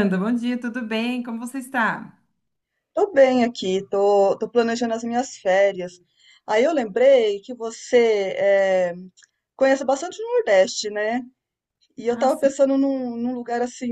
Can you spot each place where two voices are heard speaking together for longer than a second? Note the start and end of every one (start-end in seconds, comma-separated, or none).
none